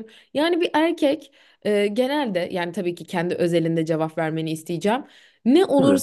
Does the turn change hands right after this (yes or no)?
no